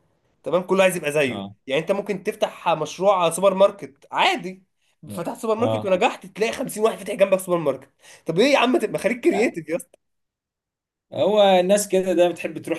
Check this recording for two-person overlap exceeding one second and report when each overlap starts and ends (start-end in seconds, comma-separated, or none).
none